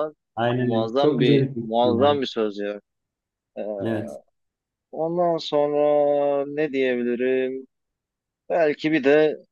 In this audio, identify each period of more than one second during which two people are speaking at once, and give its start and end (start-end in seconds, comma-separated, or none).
0.6-2.2